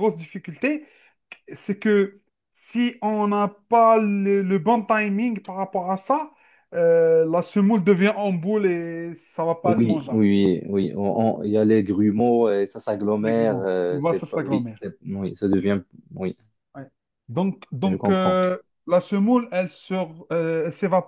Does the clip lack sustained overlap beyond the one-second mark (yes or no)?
no